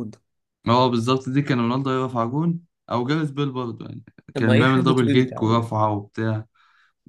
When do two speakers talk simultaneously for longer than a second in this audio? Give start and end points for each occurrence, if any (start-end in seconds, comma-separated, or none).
4.3-5.7